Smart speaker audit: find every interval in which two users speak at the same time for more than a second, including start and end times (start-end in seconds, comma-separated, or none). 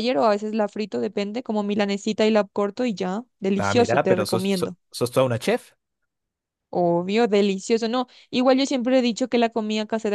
3.5-4.8